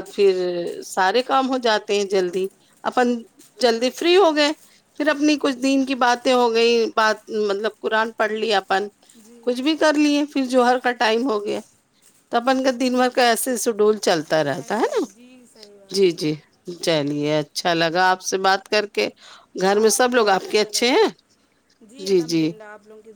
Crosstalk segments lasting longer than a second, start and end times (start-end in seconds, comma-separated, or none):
19.8-21.1